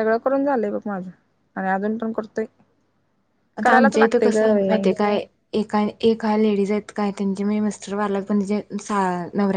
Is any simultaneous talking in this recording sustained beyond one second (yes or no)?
yes